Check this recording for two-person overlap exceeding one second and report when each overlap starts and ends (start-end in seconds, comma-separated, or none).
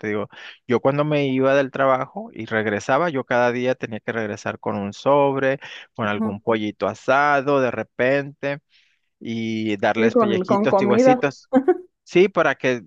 10.0-11.2